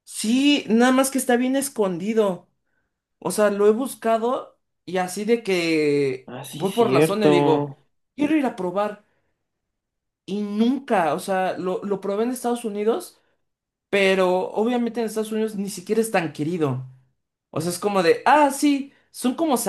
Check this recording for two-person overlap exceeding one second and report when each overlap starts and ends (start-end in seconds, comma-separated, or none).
6.3-7.7